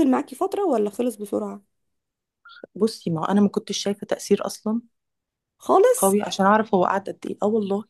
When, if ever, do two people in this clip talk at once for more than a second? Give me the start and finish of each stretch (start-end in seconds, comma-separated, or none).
none